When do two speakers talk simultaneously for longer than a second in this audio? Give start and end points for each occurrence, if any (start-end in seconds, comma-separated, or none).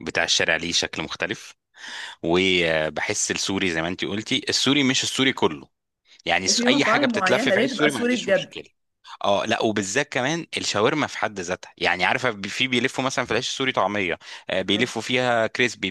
6.5-8.5